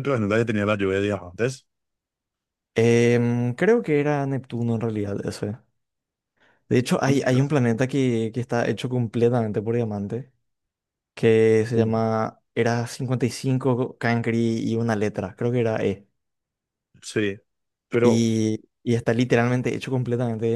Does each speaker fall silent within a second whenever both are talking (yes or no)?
yes